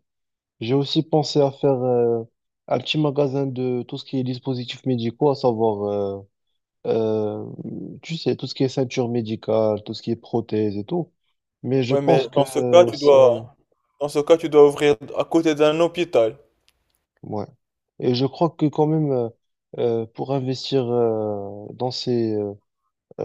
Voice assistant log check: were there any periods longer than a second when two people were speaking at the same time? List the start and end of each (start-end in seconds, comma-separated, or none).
11.9-13.2